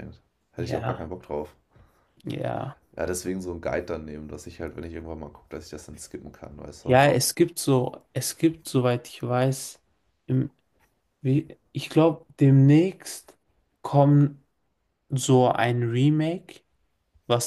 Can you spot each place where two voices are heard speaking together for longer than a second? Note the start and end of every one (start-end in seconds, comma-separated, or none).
none